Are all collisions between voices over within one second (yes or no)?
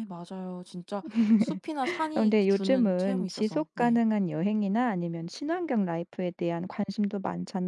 no